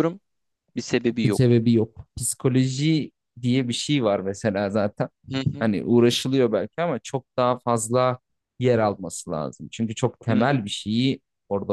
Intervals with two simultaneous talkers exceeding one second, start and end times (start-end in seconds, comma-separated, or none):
none